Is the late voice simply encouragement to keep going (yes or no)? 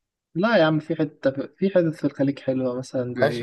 no